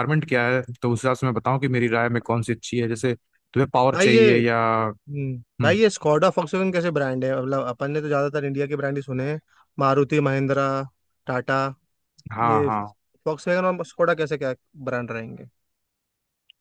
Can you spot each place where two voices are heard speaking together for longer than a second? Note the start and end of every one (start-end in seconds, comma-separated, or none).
none